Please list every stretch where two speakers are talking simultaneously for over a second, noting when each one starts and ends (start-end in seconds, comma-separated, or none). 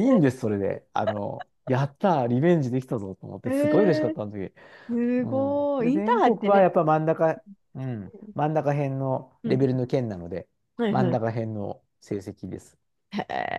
5.2-6.7